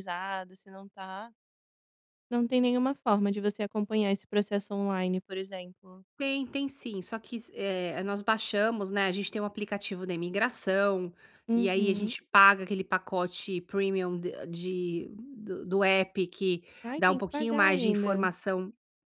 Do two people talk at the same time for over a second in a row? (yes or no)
yes